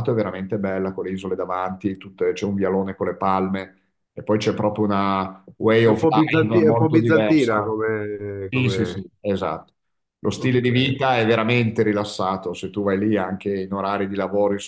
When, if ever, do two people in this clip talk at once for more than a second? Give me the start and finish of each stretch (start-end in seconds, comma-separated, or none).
5.8-7.7